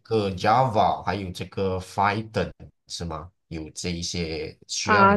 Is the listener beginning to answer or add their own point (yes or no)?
yes